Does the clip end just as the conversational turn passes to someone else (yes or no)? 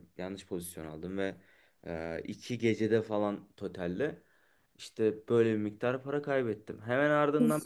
no